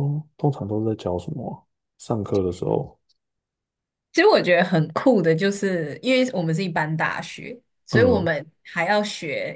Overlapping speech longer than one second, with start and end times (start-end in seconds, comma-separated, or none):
none